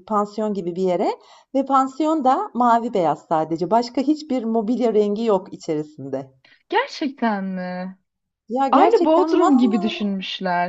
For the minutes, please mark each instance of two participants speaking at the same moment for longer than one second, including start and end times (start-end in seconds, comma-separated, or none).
8.7-10.0